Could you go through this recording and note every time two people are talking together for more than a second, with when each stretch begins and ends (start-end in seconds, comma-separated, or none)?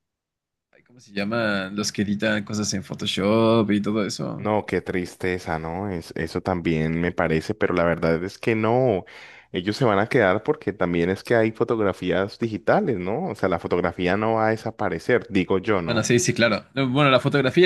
none